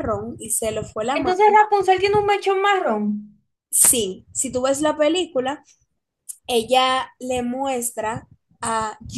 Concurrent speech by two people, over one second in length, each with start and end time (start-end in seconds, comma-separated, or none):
none